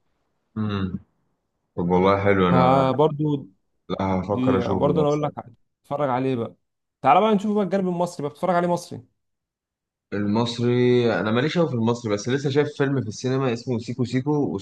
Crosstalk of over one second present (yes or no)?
yes